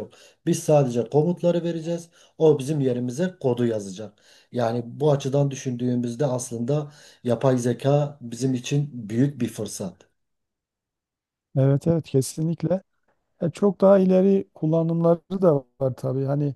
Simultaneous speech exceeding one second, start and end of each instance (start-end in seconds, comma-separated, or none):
none